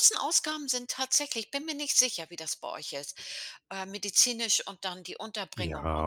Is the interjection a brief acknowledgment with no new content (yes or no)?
no